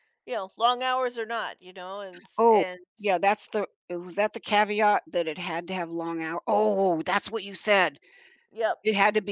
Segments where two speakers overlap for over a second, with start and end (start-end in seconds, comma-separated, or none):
none